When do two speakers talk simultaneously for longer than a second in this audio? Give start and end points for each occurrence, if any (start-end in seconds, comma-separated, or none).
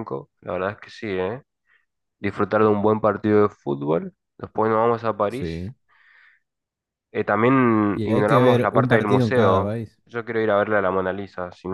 7.9-10.0